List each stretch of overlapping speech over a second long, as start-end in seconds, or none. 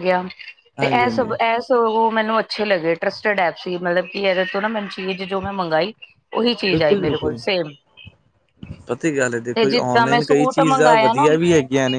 9.5-11.3